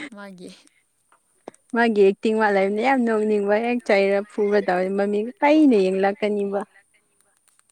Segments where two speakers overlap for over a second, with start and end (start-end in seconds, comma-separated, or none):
2.5-6.6